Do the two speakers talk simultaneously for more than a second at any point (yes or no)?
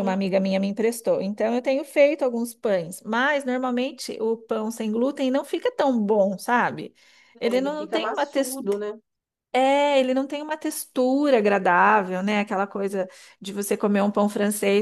yes